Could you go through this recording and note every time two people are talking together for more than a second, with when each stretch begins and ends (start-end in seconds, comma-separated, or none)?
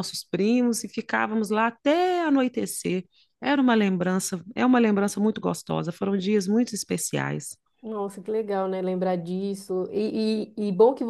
none